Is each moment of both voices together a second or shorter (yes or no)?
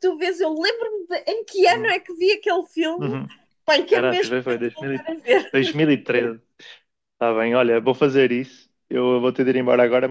no